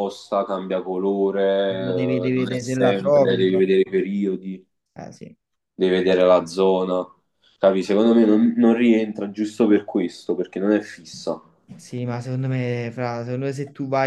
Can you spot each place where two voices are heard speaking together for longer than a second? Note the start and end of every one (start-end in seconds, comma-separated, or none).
2.3-3.6